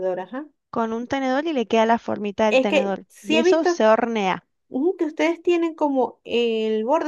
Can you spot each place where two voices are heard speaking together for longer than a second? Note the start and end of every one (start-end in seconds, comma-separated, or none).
2.5-3.8